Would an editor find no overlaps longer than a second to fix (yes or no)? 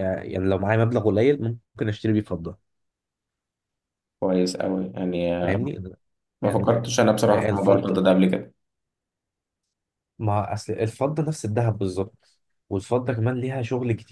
no